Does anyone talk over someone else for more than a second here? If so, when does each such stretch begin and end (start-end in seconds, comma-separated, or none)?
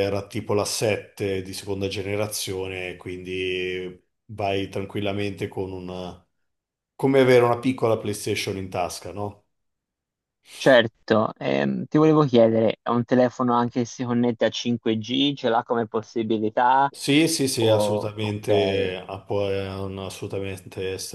17.6-18.9